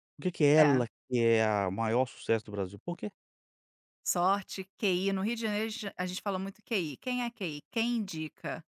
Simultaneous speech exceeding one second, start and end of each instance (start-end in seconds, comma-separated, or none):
none